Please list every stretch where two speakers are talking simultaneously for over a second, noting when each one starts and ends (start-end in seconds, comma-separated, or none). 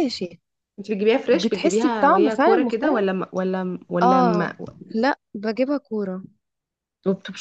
1.3-3.1